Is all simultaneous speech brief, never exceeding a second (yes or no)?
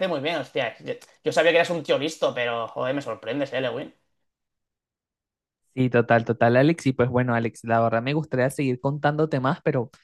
yes